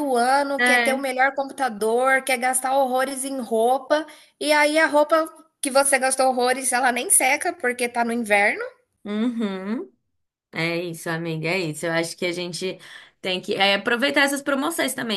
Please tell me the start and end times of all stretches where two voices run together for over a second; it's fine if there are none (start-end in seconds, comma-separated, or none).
none